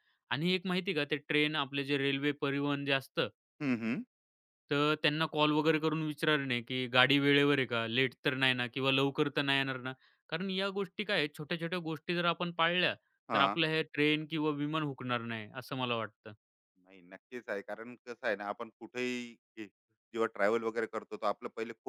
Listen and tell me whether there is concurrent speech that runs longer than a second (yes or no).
no